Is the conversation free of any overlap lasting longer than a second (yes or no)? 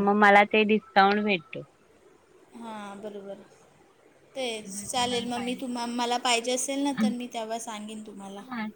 yes